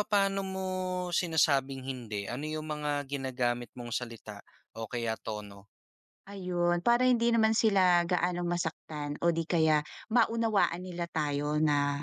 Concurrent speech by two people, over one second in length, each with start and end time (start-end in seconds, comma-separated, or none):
none